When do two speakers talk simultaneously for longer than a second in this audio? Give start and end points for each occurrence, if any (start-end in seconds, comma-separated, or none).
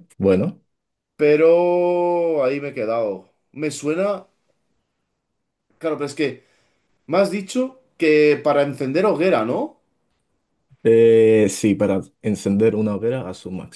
none